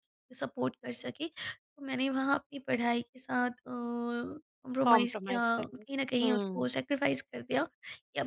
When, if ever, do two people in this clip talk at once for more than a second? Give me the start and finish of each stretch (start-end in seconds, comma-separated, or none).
4.9-6.7